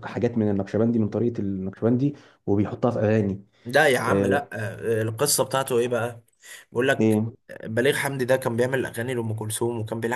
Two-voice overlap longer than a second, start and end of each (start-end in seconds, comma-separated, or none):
none